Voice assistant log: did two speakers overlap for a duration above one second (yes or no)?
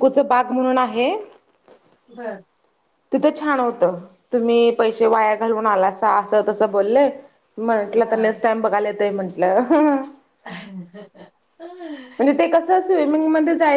no